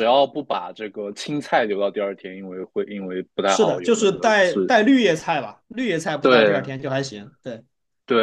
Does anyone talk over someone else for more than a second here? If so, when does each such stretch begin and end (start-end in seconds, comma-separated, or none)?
3.5-4.7